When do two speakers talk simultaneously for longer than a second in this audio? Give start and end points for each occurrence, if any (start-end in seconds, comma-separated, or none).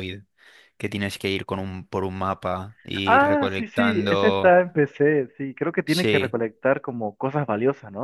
3.0-4.6